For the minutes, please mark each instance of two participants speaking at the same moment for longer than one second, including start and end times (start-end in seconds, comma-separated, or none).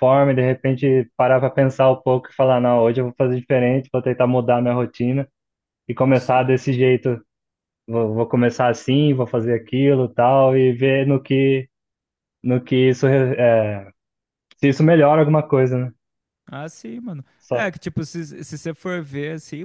none